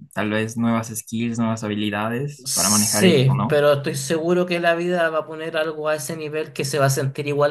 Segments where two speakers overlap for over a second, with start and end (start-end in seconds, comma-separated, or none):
2.4-3.6